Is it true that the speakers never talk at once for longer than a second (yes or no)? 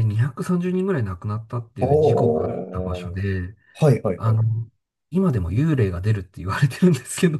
no